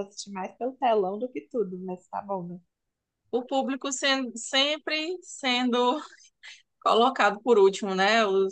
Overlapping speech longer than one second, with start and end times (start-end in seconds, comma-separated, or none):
none